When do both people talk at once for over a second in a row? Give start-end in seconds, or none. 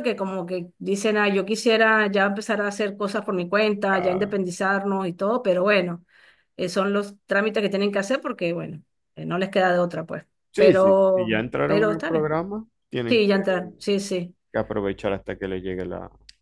10.5-12.4